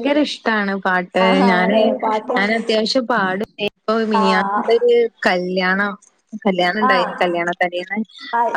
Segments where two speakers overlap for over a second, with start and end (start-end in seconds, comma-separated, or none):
none